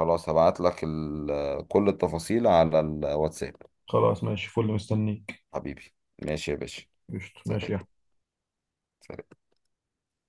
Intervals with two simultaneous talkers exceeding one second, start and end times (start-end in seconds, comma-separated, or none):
none